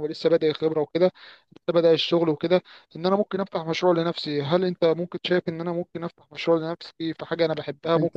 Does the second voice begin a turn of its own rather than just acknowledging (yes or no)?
no